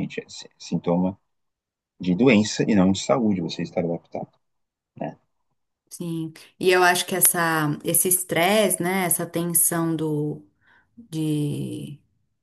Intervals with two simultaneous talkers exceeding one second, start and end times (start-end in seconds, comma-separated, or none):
none